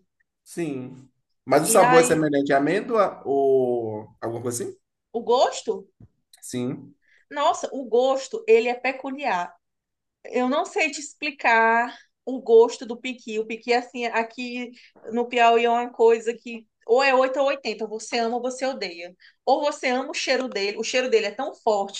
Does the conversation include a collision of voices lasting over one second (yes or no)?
no